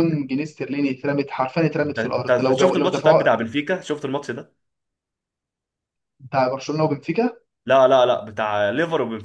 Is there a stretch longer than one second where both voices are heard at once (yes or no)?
yes